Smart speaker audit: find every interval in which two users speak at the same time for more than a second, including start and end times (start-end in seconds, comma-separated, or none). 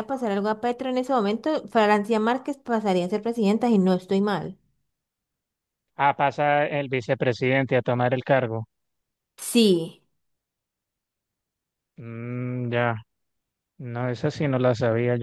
none